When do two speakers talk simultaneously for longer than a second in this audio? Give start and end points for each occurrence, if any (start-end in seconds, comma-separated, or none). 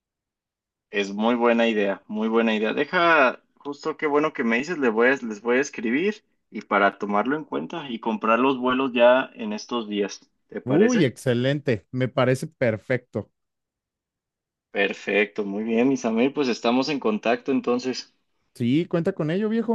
none